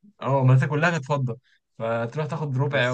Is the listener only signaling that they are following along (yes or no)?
no